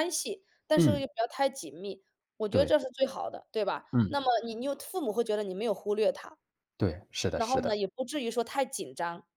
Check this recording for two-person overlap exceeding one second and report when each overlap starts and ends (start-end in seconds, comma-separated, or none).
none